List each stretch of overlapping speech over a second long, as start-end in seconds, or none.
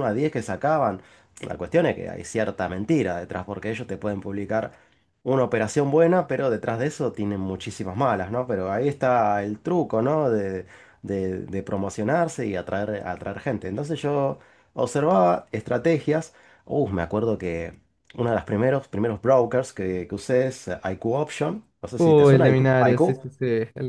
22.0-23.2